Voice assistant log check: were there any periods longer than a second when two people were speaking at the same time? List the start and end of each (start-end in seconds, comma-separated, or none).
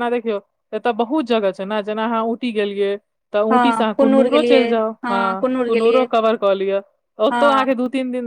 3.5-6.0